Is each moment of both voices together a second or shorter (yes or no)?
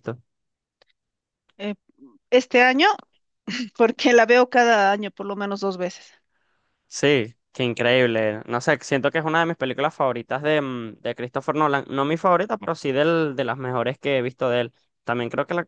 yes